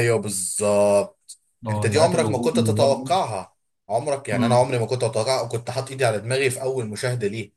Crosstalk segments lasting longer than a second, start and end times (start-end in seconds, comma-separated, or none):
1.7-3.1